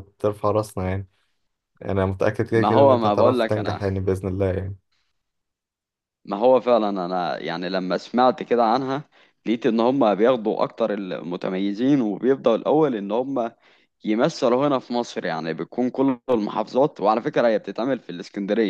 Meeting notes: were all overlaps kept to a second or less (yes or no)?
no